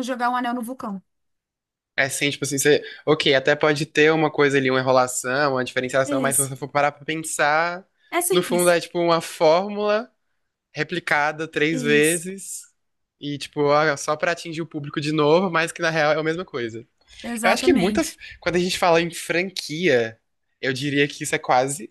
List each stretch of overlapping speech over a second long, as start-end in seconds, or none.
none